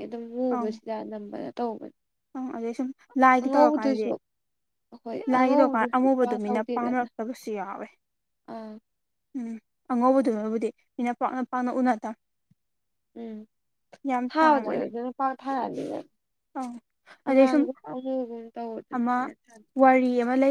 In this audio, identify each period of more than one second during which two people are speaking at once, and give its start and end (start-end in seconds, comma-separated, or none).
5.3-7.1